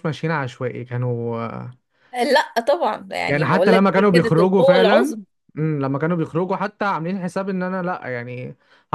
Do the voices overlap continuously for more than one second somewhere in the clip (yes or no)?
yes